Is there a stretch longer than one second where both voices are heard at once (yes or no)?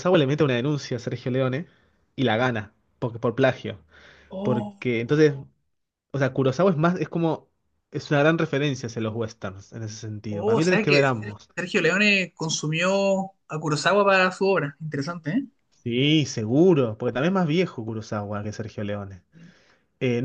yes